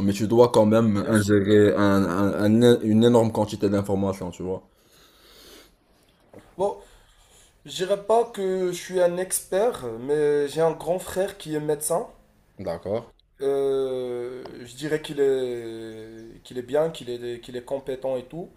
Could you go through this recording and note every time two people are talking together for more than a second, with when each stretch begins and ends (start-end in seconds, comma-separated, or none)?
none